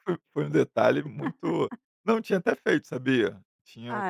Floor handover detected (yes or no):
no